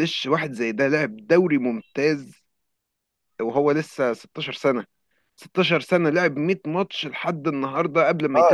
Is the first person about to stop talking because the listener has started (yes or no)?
yes